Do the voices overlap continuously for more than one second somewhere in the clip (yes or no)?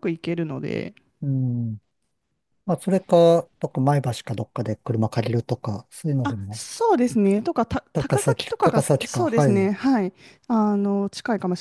yes